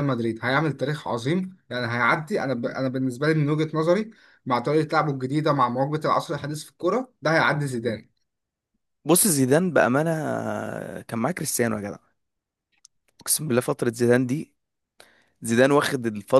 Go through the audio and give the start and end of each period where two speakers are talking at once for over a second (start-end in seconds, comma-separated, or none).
none